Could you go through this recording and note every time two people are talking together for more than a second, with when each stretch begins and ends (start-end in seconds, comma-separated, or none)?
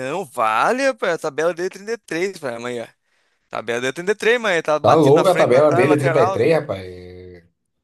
4.8-6.5